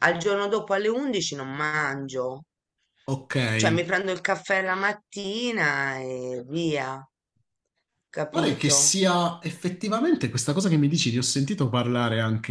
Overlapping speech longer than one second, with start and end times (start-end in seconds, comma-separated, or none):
none